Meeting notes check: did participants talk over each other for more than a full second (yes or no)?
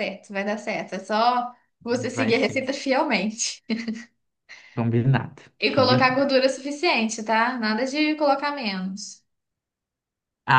no